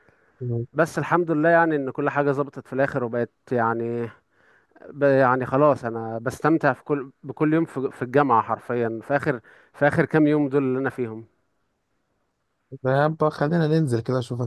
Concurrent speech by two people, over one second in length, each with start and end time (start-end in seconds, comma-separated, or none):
none